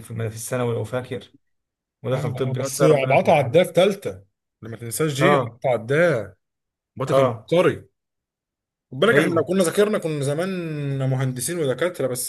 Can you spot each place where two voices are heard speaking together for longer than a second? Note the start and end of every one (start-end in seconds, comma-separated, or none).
2.1-3.7